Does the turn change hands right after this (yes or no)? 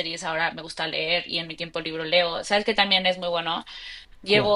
no